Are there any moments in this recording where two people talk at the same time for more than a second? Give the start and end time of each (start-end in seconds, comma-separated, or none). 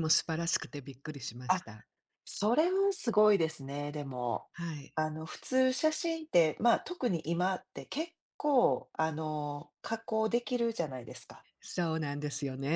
none